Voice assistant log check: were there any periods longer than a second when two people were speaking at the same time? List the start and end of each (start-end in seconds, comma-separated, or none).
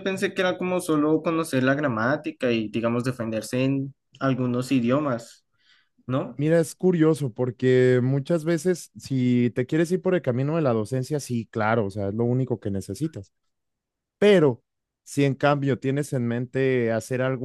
none